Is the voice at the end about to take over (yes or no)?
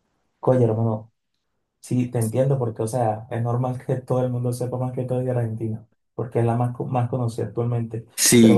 no